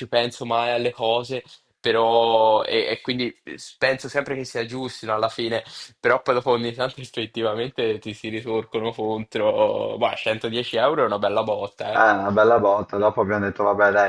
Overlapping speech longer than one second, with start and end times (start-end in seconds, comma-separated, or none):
none